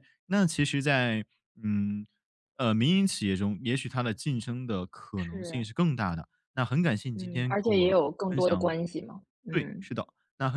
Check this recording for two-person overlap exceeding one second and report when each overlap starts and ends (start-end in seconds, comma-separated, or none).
7.1-8.7